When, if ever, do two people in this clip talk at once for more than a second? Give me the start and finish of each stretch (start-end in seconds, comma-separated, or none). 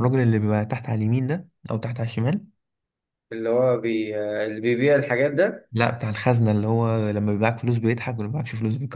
none